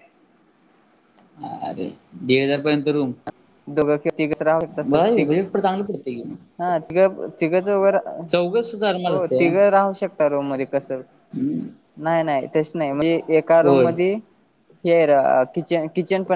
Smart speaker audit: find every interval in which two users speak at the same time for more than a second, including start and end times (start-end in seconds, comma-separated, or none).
none